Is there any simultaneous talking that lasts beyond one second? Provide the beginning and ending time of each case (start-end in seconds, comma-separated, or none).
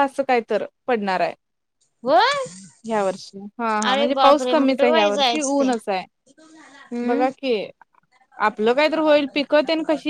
3.9-5.7